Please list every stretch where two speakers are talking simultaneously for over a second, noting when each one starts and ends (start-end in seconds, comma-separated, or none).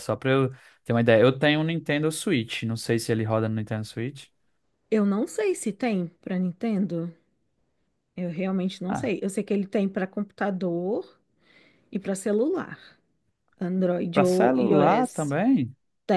14.1-15.4